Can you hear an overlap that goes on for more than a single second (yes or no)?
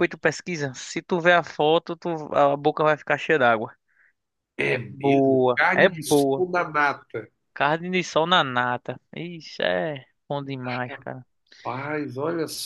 yes